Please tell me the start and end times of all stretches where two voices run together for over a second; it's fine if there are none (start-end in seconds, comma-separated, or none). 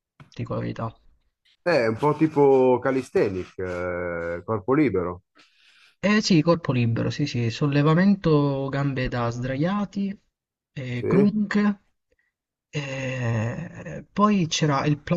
none